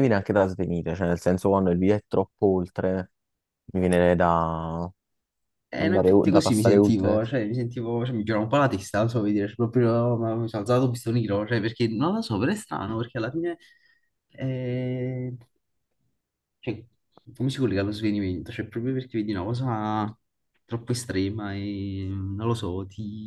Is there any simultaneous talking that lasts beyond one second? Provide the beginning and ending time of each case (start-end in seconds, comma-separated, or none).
5.8-7.2